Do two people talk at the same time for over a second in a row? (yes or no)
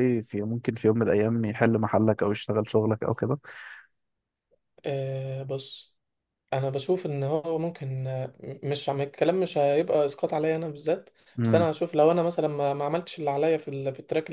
no